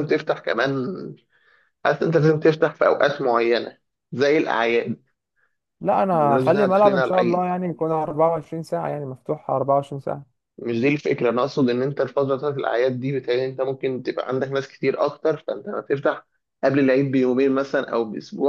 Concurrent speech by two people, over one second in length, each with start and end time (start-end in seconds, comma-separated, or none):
6.2-7.5